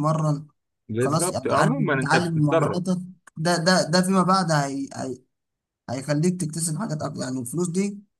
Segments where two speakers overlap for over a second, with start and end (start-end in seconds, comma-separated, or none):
1.0-2.8